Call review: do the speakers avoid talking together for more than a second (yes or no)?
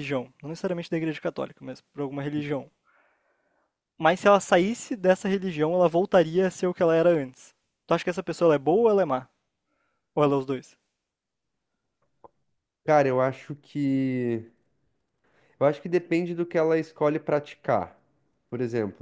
yes